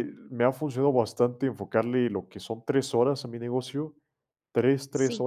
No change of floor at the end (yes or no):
yes